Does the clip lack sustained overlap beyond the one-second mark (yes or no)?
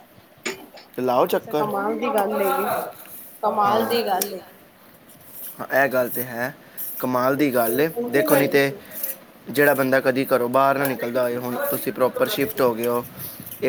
no